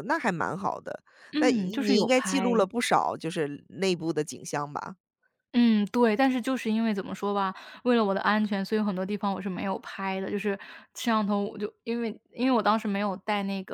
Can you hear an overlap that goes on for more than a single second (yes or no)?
yes